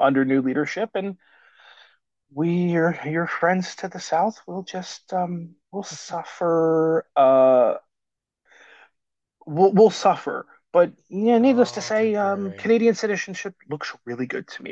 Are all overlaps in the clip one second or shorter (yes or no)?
no